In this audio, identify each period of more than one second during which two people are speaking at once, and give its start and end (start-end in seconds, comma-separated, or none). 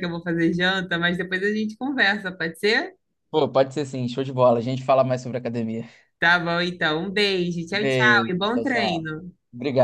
7.7-9.1